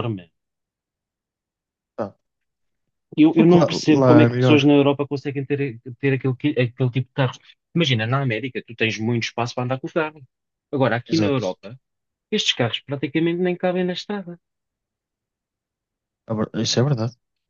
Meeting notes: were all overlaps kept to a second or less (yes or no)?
no